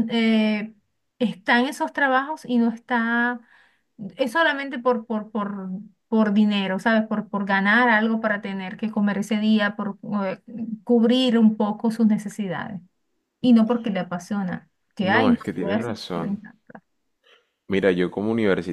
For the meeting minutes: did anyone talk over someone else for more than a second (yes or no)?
yes